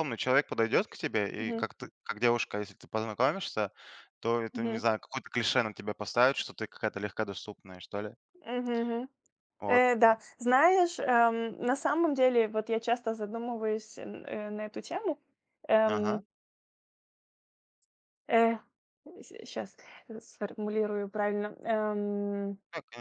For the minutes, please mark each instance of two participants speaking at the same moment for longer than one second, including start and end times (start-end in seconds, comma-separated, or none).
none